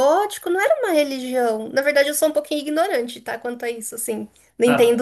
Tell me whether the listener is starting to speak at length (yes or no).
yes